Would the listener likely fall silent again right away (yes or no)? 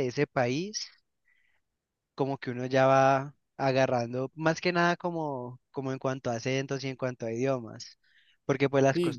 yes